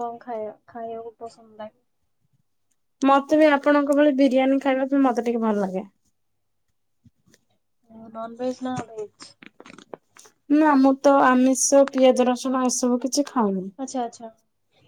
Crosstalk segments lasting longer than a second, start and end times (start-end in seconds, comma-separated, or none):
none